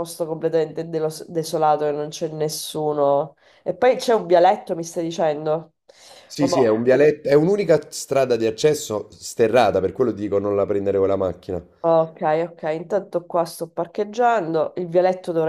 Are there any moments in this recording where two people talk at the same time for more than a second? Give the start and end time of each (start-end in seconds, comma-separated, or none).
none